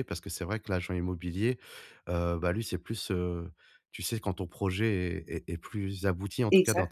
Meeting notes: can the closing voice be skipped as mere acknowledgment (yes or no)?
yes